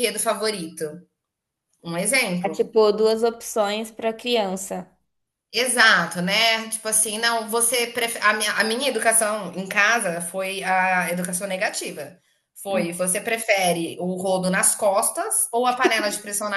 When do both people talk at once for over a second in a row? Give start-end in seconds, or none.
none